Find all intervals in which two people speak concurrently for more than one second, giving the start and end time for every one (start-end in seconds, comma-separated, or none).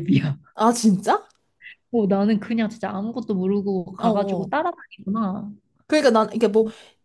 none